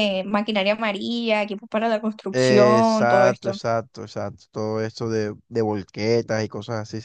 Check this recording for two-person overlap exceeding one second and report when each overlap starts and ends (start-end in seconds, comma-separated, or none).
2.3-3.6